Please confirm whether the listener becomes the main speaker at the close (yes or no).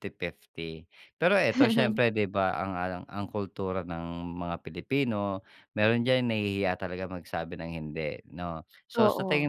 no